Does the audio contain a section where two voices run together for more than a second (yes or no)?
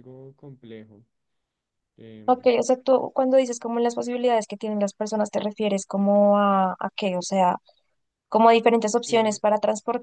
no